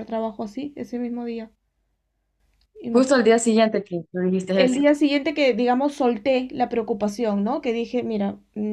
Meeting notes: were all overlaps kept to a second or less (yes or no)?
yes